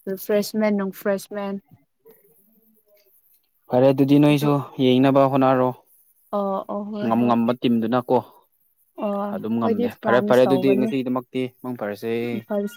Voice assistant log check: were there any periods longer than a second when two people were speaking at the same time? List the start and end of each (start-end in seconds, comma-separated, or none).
9.3-10.9